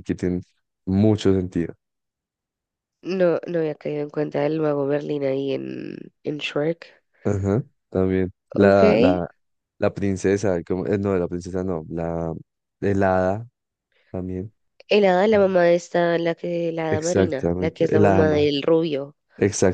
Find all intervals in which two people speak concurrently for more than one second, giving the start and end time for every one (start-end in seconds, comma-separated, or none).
16.9-18.5